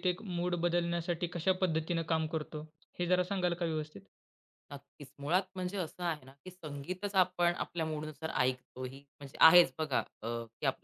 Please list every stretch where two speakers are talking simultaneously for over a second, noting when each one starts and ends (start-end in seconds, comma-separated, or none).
none